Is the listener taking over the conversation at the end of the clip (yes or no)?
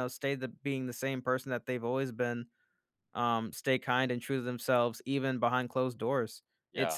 no